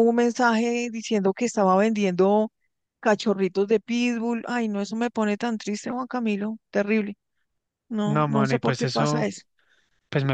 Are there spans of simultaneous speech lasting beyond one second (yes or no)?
yes